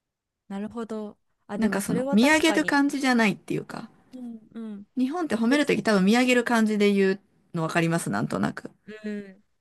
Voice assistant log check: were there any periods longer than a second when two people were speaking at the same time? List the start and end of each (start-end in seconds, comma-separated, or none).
1.6-2.8